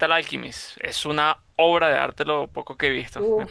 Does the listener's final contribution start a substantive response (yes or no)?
yes